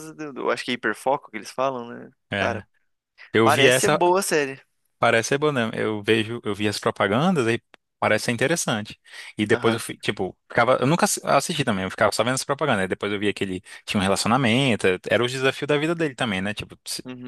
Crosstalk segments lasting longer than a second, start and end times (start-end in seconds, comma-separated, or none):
none